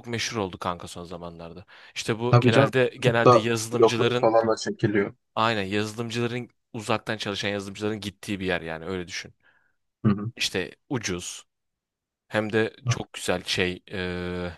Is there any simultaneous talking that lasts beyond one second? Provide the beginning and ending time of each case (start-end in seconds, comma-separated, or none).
2.3-4.3